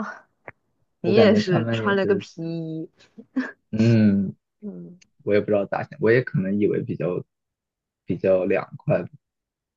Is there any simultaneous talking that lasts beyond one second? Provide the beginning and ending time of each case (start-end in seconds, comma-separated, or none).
1.0-2.3